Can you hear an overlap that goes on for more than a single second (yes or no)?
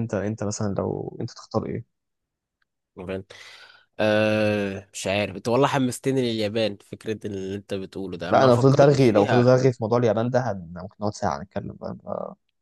yes